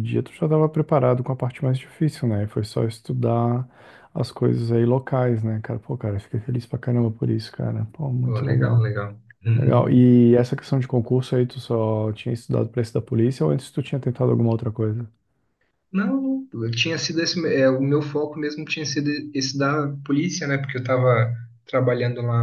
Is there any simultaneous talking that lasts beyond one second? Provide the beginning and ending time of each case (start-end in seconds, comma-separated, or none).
none